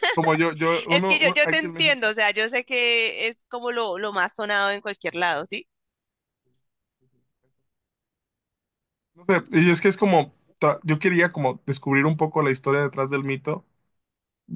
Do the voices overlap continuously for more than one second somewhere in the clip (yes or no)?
yes